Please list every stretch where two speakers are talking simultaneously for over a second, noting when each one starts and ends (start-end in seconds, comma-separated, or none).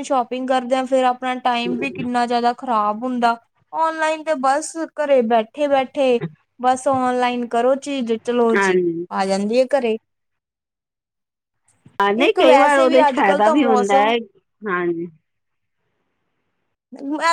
12.2-14.1